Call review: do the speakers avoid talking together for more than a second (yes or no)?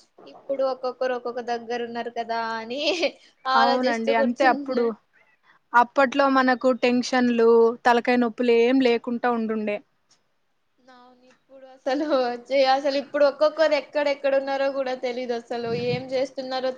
no